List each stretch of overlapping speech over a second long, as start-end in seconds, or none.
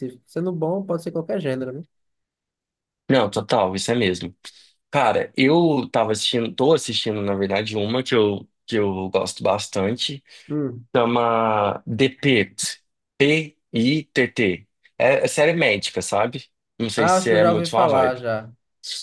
16.9-18.2